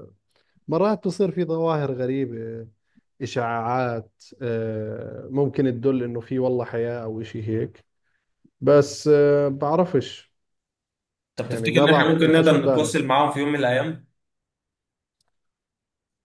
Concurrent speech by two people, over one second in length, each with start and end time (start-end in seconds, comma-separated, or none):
11.5-13.0